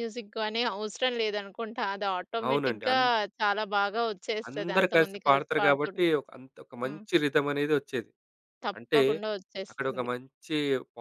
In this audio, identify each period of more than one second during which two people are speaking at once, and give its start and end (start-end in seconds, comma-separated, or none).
4.5-6.1